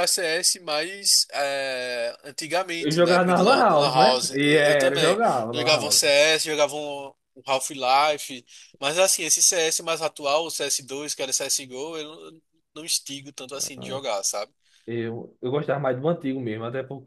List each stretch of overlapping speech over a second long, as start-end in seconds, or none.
2.8-6.1